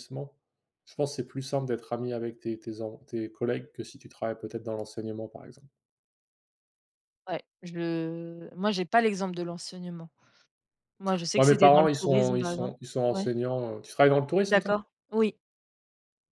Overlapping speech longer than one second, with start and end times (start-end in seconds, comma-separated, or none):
11.3-13.3